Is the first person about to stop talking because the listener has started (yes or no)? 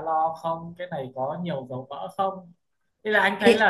no